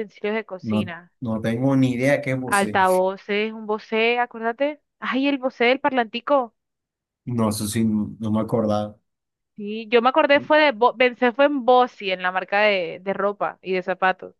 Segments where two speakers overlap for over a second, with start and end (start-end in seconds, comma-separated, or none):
none